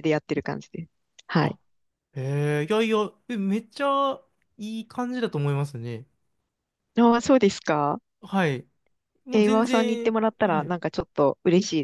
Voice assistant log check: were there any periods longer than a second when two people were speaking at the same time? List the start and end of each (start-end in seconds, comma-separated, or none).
9.3-10.8